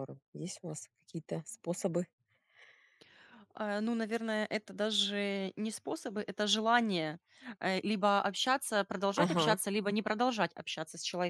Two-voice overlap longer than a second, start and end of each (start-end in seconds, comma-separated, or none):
none